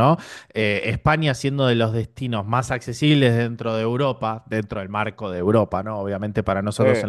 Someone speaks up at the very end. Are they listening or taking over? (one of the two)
listening